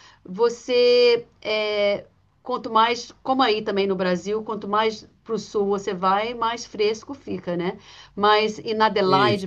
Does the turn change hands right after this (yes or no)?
no